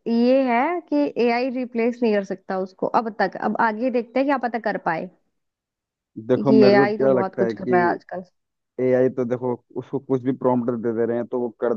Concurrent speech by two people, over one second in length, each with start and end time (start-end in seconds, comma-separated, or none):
6.3-7.8